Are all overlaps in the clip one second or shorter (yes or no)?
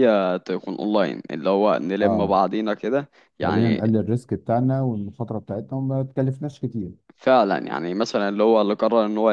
yes